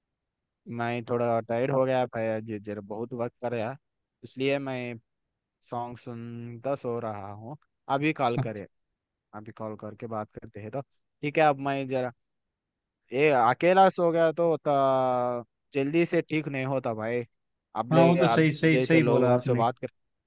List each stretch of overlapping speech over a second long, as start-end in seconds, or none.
17.9-19.6